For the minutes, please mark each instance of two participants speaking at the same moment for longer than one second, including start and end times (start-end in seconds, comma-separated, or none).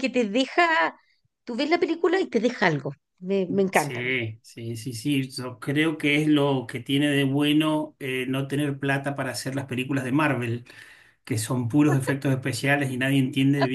none